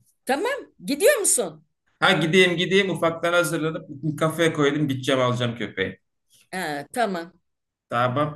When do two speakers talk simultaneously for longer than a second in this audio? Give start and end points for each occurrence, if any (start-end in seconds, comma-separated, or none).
none